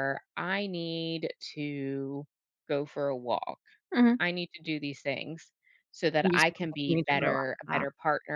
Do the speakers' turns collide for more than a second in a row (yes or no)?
yes